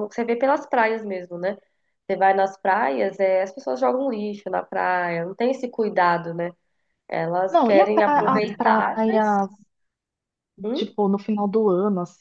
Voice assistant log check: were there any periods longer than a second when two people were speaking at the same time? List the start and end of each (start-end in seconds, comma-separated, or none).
7.5-9.2